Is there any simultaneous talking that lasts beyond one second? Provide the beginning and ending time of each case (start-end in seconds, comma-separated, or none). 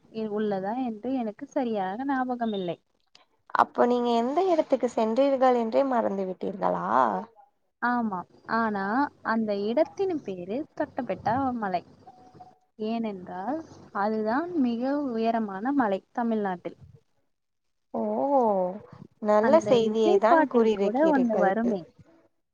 19.5-21.5